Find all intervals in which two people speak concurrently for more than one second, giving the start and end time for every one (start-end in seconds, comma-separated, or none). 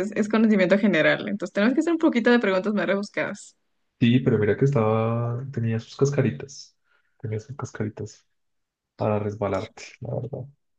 none